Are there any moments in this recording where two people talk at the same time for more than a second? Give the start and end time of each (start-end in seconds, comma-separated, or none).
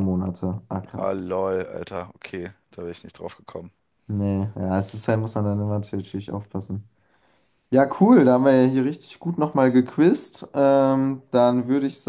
none